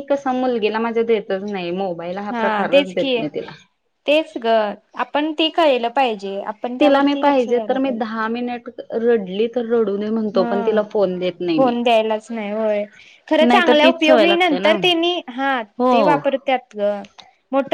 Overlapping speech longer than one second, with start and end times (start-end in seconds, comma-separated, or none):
13.5-14.7